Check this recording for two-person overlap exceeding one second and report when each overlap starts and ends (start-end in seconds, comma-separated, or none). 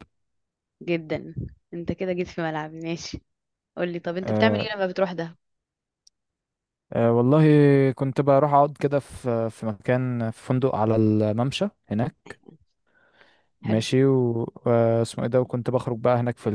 none